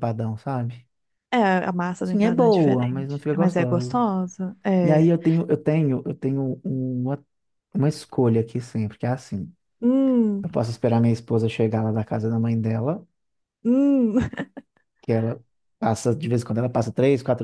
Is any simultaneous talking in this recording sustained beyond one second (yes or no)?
yes